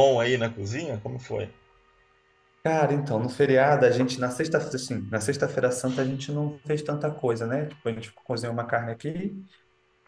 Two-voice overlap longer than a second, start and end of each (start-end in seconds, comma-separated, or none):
none